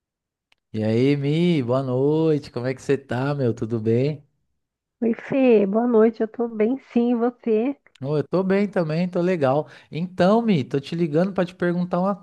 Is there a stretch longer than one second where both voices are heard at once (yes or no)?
no